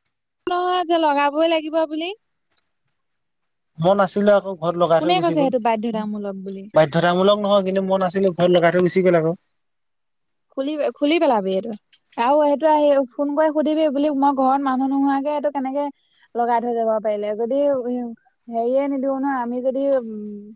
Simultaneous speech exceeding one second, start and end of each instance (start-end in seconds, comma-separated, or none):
5.0-6.6